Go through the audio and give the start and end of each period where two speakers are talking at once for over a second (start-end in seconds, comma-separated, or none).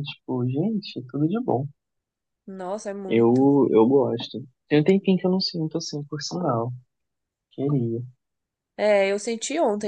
none